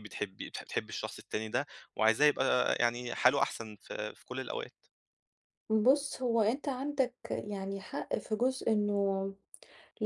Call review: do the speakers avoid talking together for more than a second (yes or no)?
yes